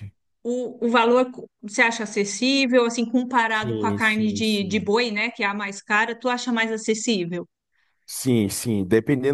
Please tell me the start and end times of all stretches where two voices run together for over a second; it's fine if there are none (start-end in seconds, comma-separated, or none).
3.5-4.9